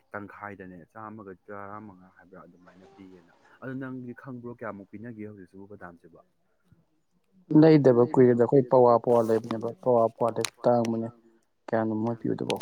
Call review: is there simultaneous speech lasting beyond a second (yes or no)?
no